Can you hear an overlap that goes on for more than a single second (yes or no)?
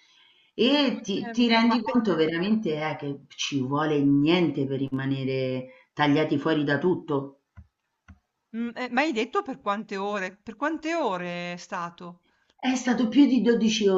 yes